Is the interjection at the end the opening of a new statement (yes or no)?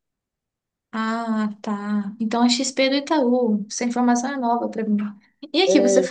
no